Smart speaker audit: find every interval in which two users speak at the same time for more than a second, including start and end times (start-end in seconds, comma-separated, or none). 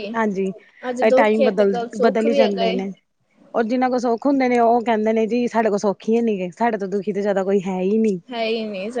1.1-2.8